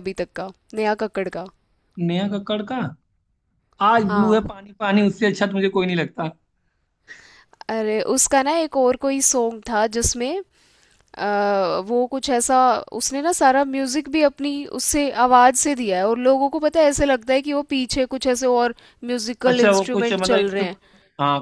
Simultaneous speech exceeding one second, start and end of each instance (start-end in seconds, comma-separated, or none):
19.5-20.8